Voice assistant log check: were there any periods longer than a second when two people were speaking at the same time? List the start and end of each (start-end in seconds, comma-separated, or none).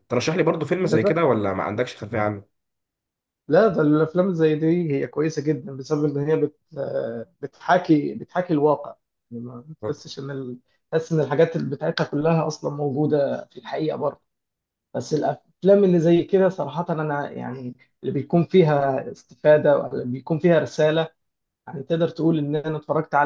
none